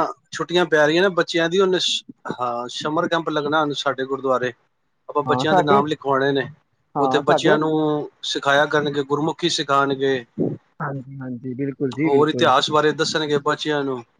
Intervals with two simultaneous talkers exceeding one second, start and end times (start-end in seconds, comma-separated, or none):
none